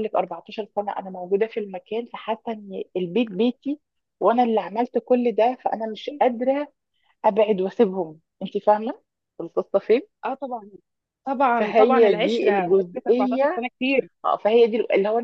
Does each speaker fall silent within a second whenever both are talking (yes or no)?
no